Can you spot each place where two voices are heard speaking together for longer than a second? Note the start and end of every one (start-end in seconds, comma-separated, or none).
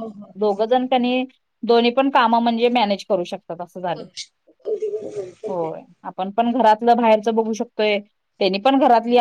none